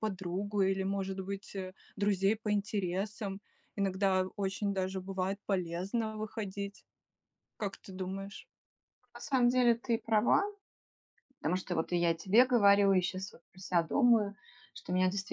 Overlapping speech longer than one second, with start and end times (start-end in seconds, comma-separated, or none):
none